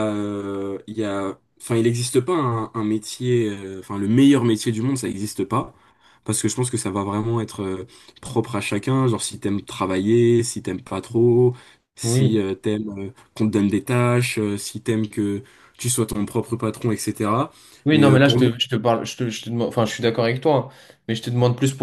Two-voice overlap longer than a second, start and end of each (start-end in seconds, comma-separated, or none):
none